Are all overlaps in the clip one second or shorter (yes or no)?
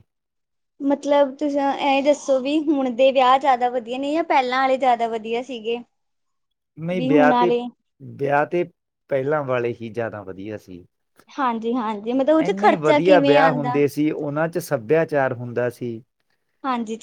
no